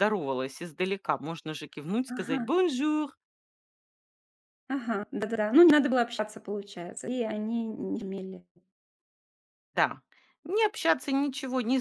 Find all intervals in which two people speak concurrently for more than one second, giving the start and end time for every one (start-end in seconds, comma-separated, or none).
none